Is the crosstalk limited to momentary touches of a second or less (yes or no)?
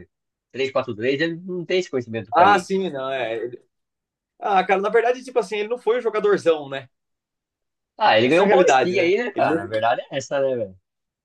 no